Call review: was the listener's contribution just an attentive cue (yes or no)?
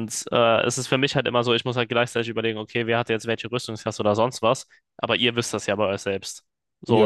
no